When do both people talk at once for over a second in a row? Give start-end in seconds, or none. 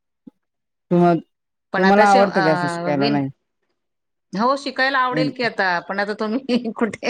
1.8-3.2